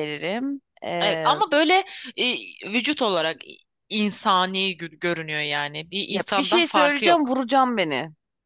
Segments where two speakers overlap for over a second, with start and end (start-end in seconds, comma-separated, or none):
6.1-7.3